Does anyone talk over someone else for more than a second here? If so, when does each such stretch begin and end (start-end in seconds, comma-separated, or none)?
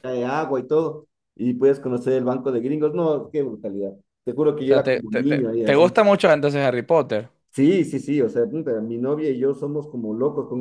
4.6-5.9